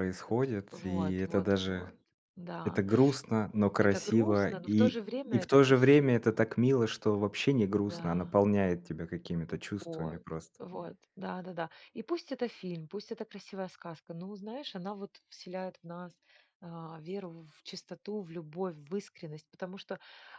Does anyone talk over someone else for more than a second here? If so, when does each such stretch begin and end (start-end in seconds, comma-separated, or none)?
0.7-1.9, 3.8-6.4